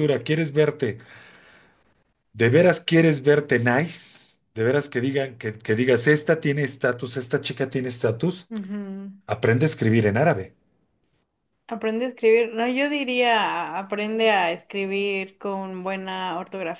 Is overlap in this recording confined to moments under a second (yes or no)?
yes